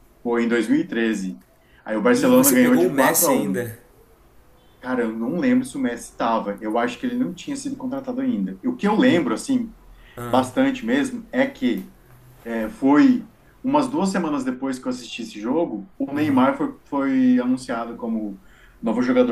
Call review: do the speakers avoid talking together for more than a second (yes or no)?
no